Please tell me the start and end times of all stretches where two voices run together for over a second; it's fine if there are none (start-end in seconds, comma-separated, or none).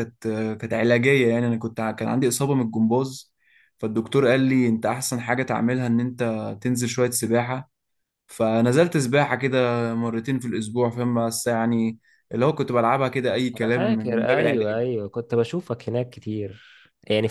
13.6-14.8